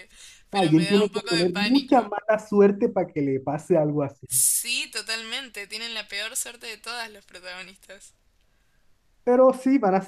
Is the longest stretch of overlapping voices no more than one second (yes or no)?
no